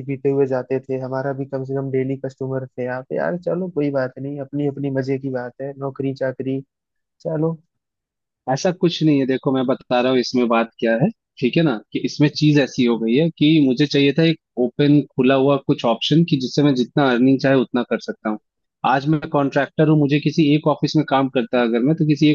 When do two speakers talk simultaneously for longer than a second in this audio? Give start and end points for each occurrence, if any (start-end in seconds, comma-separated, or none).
none